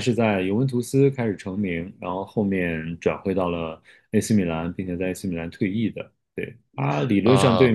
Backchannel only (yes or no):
yes